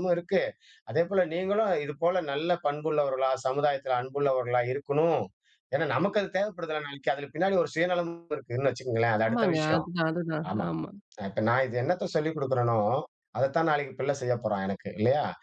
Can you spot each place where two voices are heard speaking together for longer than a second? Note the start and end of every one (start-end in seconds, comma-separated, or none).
none